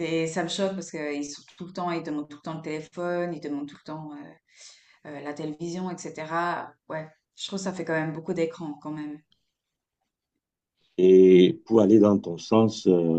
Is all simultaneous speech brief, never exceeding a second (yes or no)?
yes